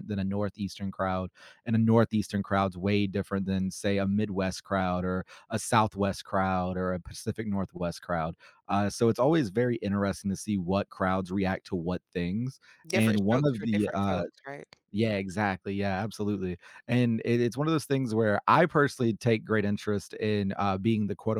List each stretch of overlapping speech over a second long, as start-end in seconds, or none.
12.8-14.2